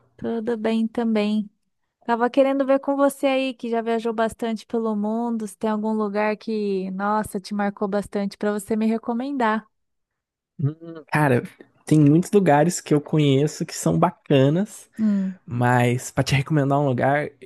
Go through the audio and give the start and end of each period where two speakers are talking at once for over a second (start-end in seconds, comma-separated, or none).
none